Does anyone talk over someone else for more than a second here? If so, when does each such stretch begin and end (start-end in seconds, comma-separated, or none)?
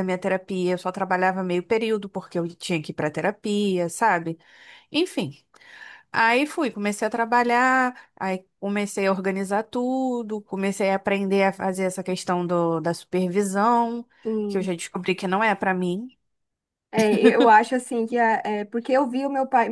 none